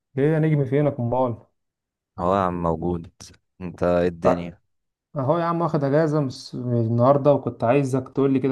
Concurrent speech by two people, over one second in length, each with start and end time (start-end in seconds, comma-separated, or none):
none